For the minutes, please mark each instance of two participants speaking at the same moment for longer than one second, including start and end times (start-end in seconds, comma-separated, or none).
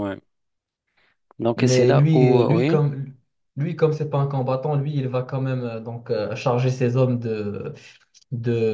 1.6-2.9